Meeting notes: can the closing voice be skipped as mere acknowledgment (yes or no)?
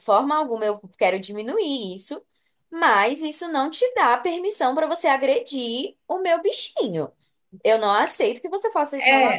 no